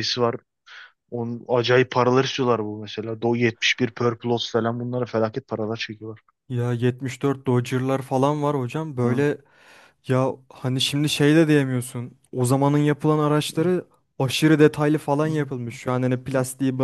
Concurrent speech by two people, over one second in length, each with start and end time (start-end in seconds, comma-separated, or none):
none